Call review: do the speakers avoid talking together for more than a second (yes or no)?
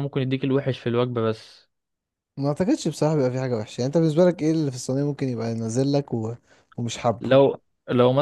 yes